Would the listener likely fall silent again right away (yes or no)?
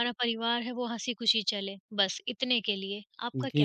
no